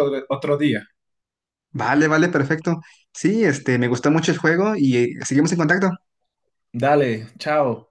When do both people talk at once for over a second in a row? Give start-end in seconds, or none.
none